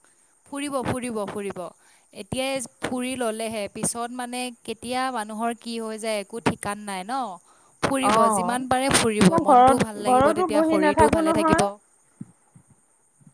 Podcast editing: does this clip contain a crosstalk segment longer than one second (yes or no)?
yes